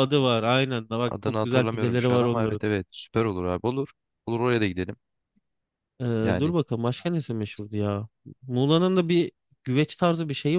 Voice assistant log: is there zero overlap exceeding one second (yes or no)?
no